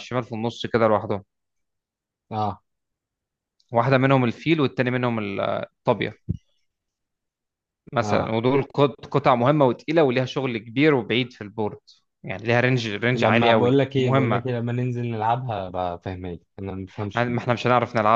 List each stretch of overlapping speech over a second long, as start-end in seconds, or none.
13.1-14.4